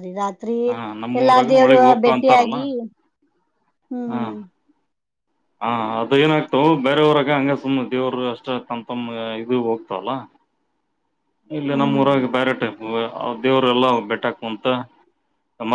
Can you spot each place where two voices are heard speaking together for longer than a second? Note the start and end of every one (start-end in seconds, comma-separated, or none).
0.7-2.6